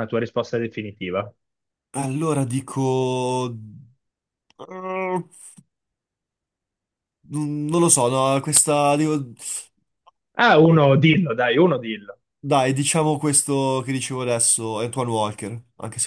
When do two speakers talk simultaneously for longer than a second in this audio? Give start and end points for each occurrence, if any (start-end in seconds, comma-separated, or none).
none